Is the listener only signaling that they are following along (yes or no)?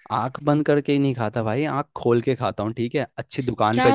no